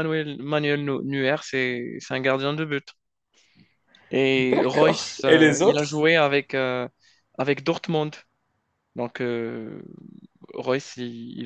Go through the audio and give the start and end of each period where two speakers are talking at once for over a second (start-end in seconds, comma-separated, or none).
4.4-6.0